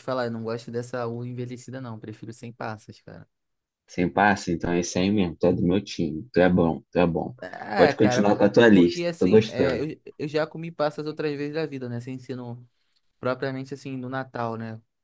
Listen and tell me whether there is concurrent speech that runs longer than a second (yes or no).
yes